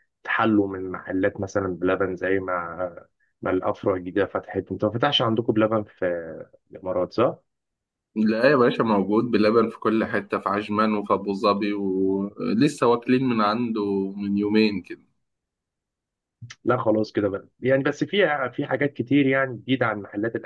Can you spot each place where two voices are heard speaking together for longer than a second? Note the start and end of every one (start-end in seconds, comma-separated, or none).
none